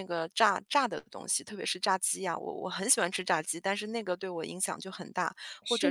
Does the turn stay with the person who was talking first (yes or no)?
yes